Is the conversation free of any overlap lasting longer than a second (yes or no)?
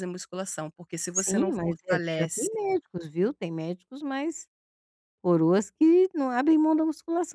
no